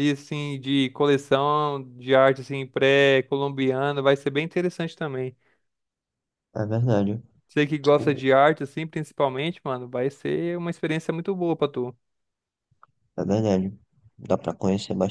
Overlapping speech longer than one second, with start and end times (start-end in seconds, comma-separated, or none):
none